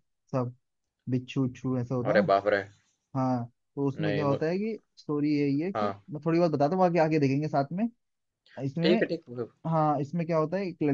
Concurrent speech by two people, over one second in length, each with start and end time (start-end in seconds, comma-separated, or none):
none